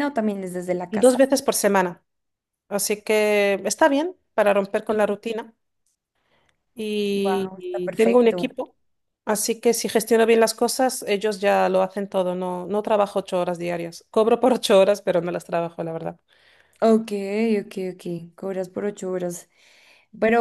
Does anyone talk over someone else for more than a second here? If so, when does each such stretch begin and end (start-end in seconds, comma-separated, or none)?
7.1-8.5